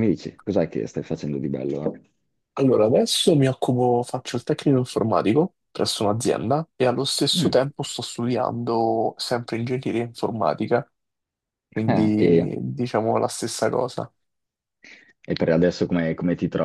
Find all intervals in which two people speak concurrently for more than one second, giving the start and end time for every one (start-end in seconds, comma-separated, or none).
none